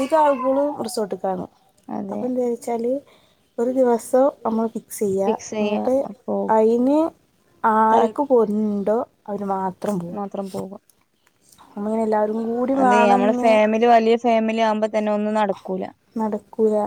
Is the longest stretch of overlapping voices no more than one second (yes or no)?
yes